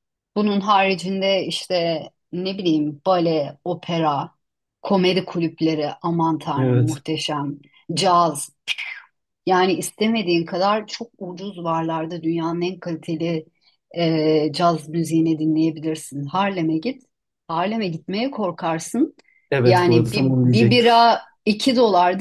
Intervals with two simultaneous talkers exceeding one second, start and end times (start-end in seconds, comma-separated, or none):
19.6-20.9